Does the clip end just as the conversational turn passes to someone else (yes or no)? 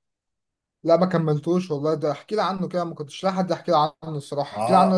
yes